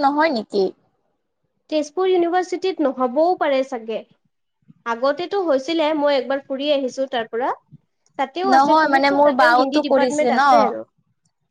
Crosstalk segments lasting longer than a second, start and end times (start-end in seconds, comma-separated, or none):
8.5-10.4